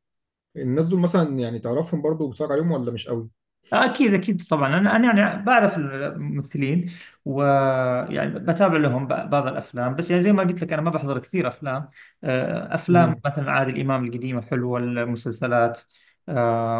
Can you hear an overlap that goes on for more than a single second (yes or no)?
no